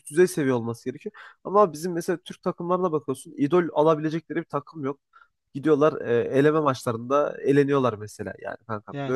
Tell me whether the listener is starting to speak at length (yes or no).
no